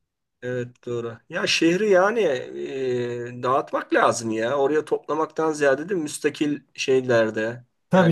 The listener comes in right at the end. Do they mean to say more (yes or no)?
yes